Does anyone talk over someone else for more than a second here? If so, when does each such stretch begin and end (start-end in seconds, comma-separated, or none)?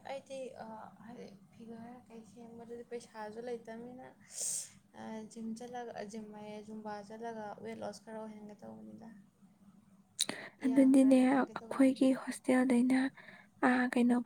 10.7-12.0